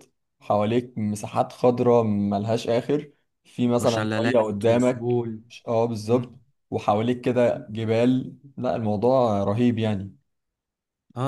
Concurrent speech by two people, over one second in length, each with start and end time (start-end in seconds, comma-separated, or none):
3.8-5.2